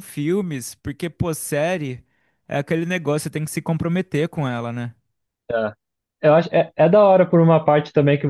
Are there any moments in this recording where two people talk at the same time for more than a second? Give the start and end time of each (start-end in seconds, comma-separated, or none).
none